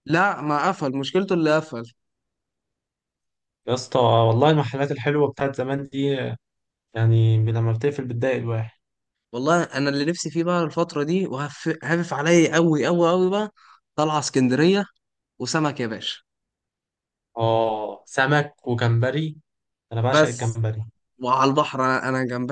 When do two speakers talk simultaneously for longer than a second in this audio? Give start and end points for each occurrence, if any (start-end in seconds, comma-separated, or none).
none